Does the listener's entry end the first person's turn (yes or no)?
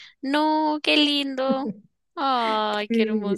yes